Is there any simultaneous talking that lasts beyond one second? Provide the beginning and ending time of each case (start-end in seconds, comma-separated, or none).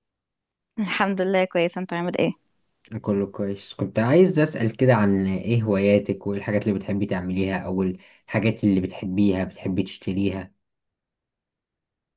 none